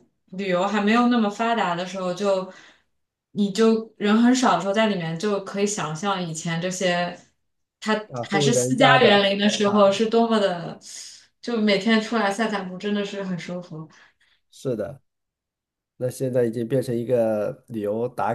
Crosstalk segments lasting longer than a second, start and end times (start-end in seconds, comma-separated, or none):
8.1-10.0